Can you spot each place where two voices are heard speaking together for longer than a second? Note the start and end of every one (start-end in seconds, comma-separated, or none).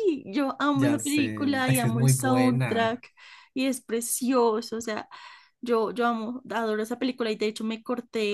0.7-3.0